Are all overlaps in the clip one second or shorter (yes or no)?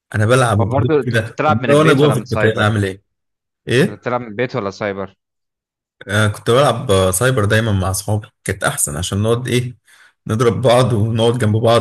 no